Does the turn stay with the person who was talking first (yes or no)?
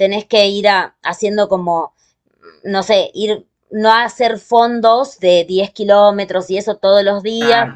yes